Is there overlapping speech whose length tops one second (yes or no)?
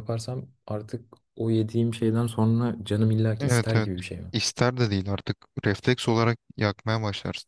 no